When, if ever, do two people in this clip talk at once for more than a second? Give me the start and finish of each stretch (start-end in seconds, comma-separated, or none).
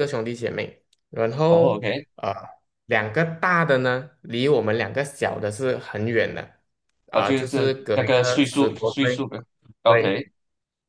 7.1-9.2